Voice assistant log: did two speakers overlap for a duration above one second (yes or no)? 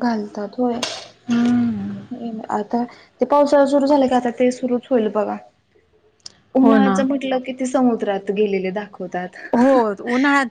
no